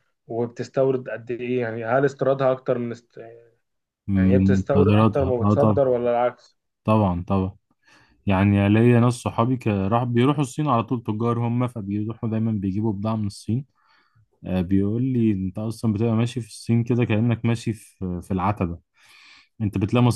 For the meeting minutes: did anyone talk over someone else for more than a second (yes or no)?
yes